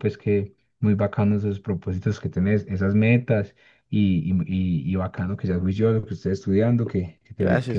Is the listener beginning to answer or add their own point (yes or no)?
no